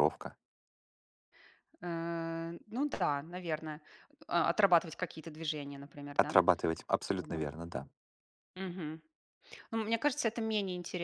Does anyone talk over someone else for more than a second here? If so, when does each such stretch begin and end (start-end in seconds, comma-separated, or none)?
none